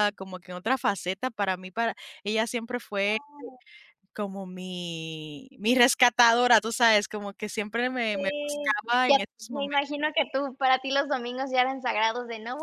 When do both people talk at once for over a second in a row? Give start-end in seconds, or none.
8.1-10.0